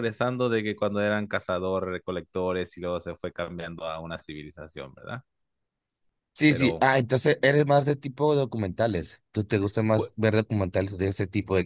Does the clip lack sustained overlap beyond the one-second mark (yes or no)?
yes